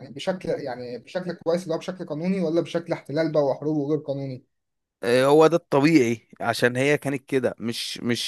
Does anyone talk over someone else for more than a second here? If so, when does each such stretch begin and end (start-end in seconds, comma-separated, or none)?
none